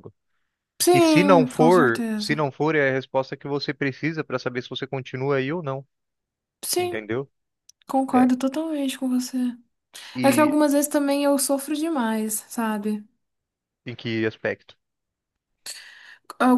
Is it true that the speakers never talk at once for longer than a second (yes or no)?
no